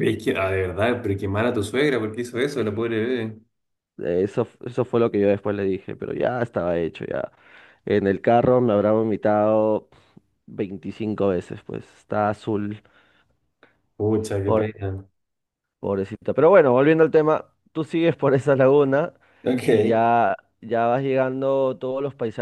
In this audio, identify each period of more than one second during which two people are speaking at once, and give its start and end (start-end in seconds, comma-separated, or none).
none